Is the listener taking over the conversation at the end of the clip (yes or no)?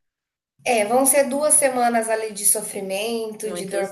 no